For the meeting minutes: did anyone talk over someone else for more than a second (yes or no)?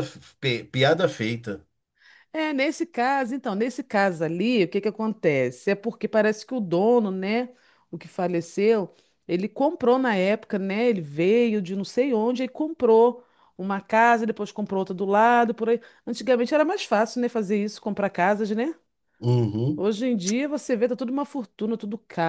no